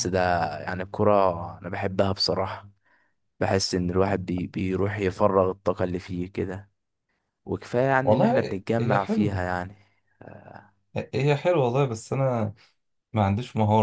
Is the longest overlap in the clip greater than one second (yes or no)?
yes